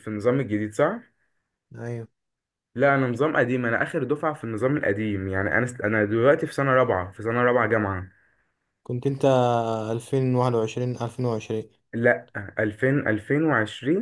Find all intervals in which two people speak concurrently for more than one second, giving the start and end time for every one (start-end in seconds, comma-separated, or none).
none